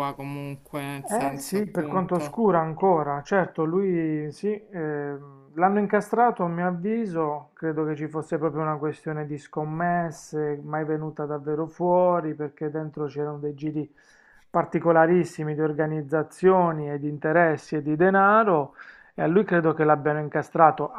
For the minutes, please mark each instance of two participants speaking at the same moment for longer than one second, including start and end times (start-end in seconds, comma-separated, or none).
1.1-2.4